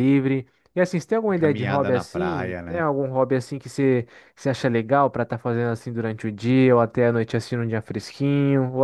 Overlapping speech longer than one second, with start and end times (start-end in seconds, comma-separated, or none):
1.4-2.9